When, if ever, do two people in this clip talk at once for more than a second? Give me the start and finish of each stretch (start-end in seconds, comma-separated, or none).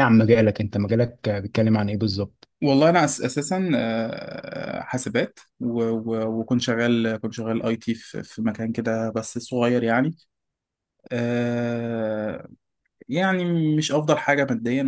none